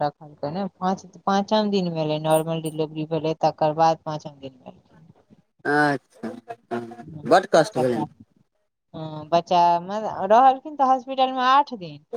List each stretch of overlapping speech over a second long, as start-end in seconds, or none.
none